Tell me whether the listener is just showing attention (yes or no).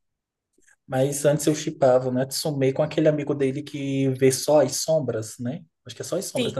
no